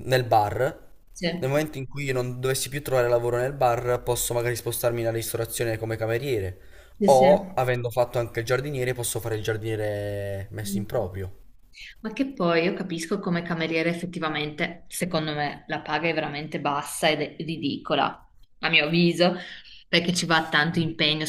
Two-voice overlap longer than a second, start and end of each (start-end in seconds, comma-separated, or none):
none